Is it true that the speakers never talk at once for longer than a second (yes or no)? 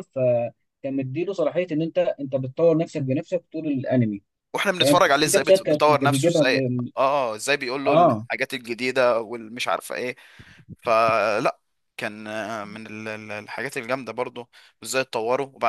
no